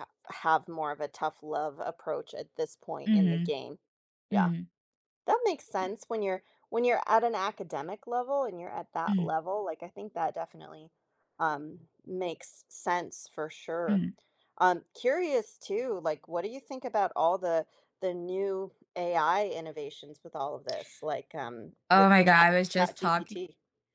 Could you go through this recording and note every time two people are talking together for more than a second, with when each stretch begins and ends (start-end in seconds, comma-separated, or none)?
21.9-23.4